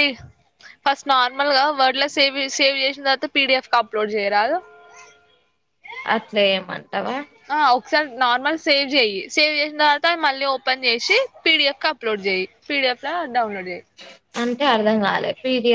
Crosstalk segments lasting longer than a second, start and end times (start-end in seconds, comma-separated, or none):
none